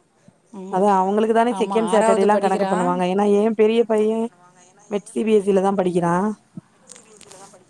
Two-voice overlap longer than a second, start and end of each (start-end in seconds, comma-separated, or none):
1.6-3.0